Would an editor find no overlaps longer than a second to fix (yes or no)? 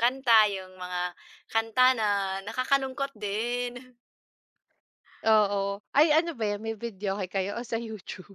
yes